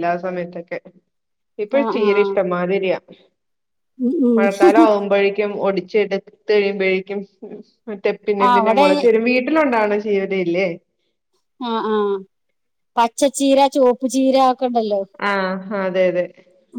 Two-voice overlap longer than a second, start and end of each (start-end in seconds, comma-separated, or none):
none